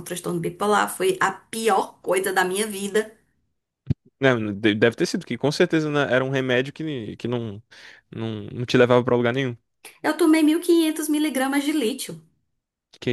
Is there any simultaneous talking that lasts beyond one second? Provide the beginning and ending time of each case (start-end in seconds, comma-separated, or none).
none